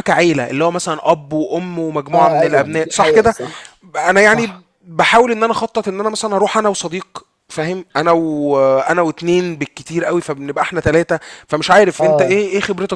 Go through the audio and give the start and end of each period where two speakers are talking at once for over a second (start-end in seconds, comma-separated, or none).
2.1-3.3